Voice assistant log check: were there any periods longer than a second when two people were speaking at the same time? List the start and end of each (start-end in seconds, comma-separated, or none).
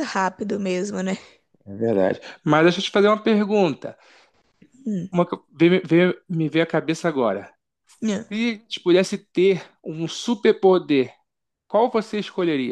none